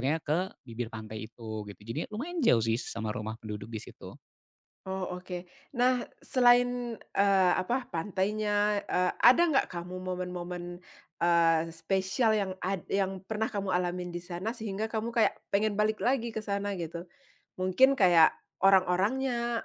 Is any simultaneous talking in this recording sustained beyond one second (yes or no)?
no